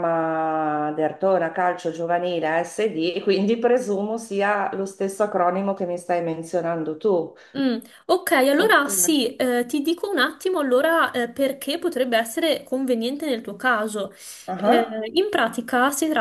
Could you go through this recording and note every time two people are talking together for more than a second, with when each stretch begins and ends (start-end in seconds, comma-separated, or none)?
none